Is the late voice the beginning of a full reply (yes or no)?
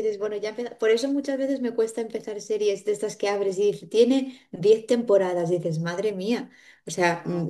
no